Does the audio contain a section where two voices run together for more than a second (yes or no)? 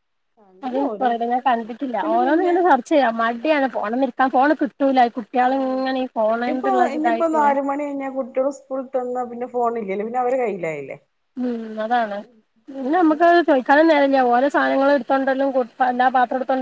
yes